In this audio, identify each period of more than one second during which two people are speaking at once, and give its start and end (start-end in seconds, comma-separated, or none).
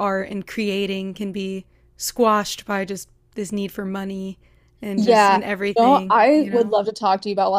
5.0-6.8